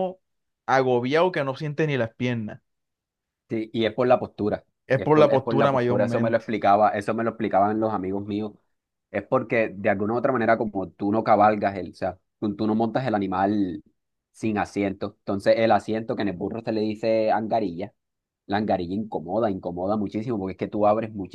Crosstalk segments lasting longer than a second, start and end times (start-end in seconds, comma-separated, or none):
4.9-6.5